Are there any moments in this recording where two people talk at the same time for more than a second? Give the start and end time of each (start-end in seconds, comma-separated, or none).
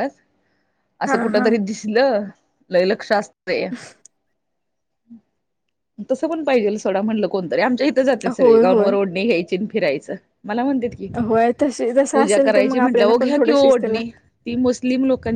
12.1-14.0